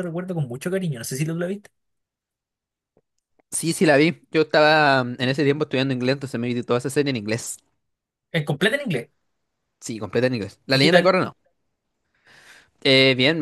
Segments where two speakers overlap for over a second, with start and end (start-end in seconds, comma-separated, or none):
none